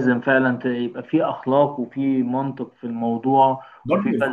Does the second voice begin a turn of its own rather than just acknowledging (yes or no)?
no